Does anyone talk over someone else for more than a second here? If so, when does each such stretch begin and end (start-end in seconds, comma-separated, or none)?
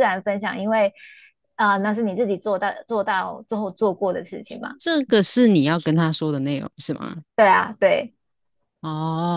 none